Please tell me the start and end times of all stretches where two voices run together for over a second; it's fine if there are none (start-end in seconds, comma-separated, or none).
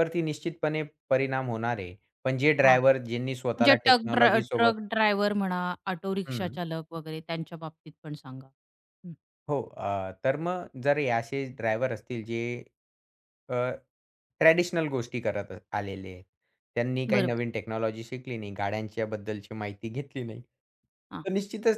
3.4-4.7